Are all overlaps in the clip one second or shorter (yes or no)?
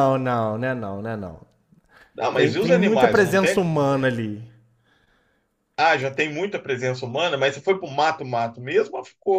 no